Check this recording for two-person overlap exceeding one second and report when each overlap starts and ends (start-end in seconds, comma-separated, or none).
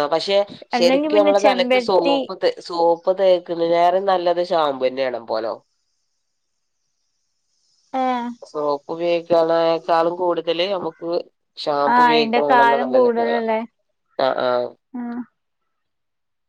0.8-2.1, 12.0-13.4